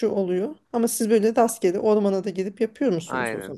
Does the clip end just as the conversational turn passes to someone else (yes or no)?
yes